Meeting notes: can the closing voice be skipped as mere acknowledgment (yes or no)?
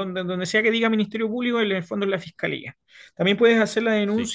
yes